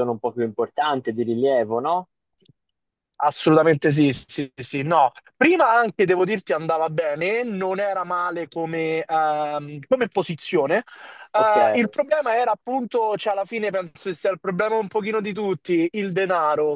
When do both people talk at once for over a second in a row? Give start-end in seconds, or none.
none